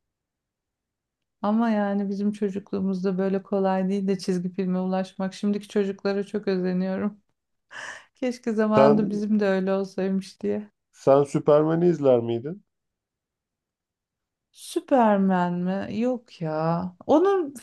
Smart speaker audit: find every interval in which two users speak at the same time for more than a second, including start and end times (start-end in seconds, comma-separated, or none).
none